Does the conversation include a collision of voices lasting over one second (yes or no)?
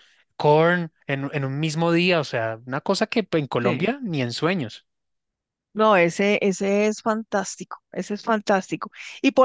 no